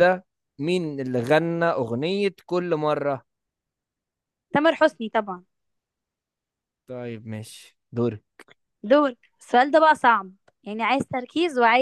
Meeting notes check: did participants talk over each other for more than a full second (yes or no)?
no